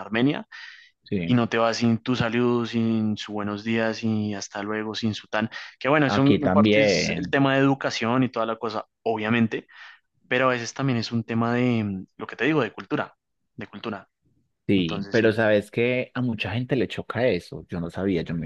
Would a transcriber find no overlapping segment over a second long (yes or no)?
no